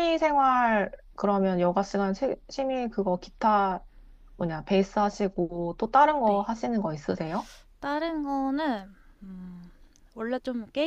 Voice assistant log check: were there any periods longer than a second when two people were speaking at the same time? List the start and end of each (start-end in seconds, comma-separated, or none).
none